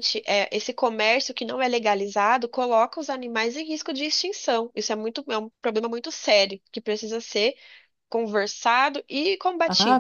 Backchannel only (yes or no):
no